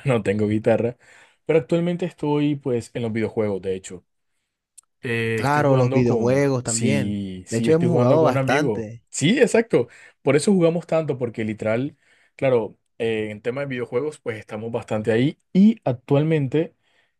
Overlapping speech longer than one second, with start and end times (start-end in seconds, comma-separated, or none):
5.3-9.0